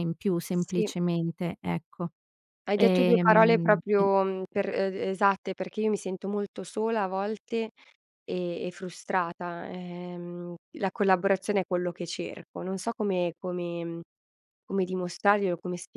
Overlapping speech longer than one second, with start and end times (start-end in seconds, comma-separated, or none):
2.8-4.1